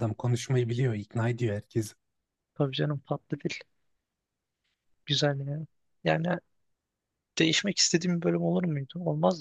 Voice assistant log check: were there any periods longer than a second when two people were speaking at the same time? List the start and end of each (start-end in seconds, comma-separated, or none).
none